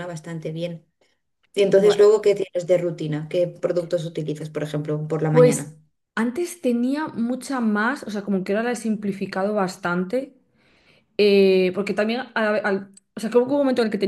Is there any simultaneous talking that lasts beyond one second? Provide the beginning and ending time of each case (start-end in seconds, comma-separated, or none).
none